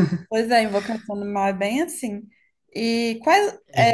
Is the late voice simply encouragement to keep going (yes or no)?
yes